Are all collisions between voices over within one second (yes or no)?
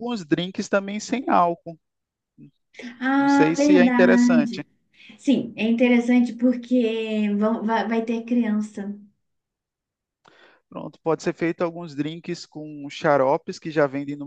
no